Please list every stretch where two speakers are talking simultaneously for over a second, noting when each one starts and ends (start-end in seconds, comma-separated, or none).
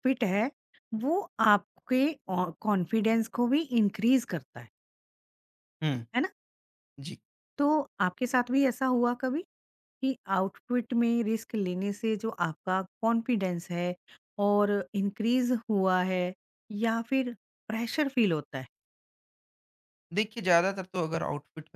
none